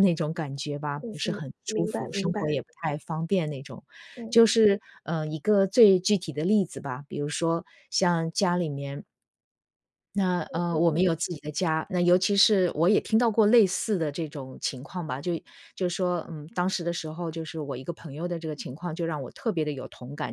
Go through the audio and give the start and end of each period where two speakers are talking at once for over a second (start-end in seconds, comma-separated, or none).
1.0-2.6